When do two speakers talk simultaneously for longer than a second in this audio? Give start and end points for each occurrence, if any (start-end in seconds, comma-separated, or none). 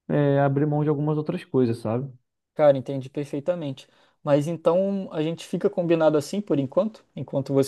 none